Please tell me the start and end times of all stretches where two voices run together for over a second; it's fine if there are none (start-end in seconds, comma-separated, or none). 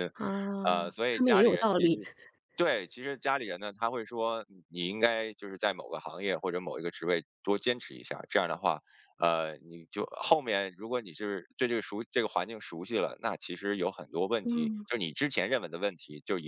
0.7-2.0